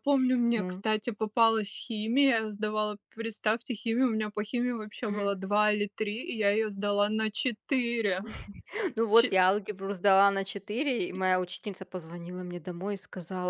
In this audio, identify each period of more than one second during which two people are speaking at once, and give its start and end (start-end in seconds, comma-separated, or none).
none